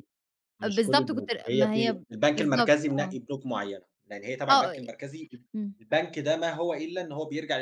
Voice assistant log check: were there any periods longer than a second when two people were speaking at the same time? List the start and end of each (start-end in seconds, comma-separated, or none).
0.6-3.2